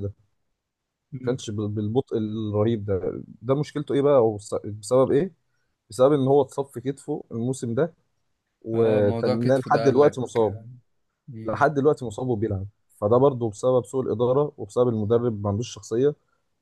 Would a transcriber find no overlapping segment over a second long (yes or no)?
no